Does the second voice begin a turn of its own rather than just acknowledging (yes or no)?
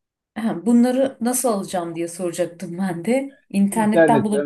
yes